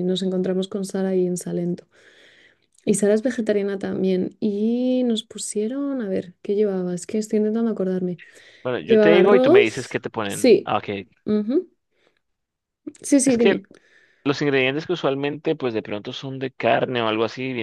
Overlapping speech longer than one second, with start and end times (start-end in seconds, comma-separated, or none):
8.8-10.7